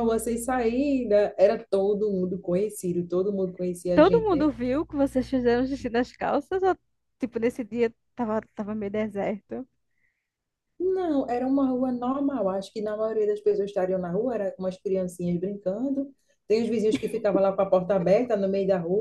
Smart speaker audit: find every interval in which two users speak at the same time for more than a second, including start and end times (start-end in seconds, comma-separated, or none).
none